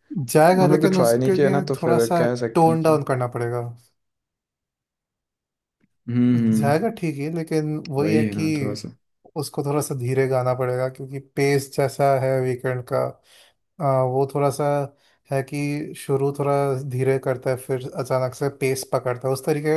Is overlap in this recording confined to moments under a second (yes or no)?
no